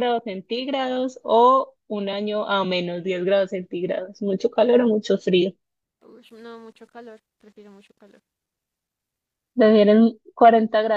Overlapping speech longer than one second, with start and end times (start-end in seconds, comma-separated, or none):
none